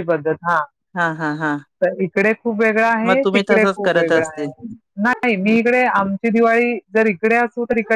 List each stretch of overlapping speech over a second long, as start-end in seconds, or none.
3.1-4.5